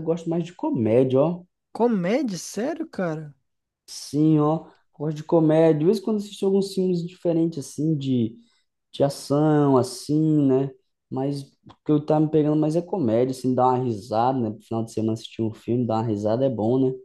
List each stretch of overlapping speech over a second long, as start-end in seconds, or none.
none